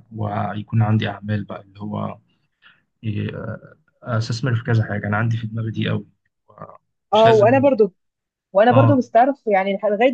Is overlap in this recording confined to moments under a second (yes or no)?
yes